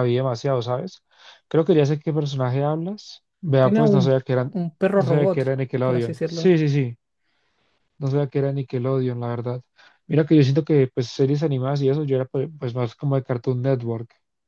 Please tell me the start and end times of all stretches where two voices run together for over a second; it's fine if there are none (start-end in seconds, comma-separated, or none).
3.6-6.5